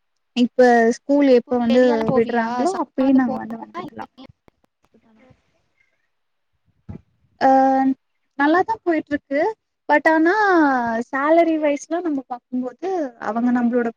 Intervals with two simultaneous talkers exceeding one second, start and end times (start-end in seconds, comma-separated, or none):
1.4-4.1